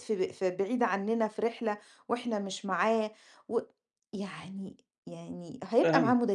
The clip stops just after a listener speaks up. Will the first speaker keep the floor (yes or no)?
yes